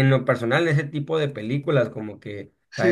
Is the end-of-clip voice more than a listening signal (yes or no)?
yes